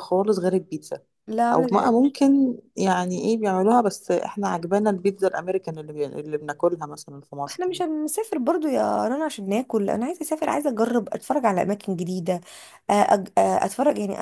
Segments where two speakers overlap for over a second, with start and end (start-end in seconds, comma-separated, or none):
none